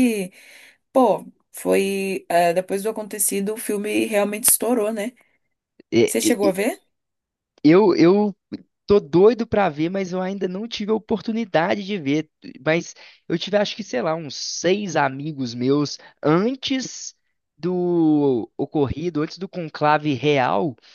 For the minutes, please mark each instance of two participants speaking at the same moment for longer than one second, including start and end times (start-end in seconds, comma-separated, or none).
none